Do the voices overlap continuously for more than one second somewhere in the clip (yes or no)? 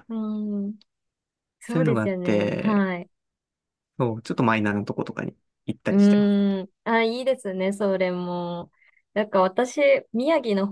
yes